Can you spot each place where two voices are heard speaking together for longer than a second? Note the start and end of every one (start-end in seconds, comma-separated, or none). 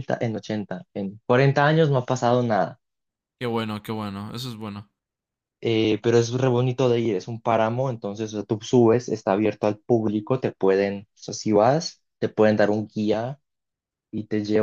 none